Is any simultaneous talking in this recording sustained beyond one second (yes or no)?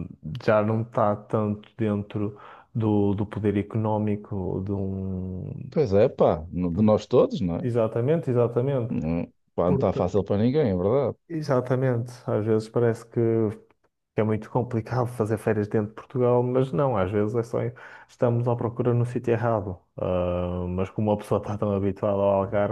no